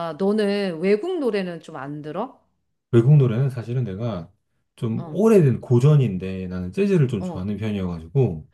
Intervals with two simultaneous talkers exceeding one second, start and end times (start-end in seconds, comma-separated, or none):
none